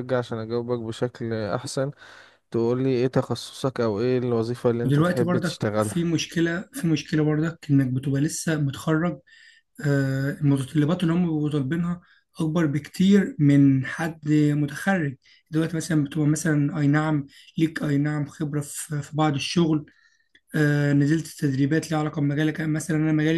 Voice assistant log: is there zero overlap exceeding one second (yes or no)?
no